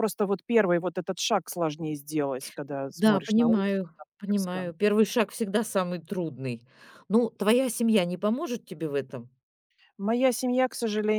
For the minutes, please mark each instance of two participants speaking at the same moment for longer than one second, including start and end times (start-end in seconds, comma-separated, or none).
2.9-4.7